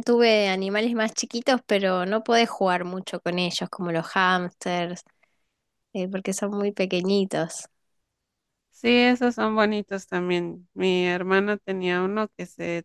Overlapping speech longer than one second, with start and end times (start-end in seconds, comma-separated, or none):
none